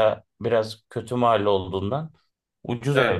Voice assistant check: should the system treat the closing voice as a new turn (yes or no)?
yes